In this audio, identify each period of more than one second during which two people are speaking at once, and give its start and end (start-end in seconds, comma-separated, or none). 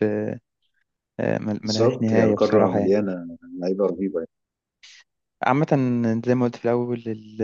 1.6-3.0